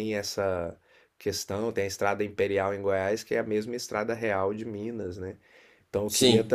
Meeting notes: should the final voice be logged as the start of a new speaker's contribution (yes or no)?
no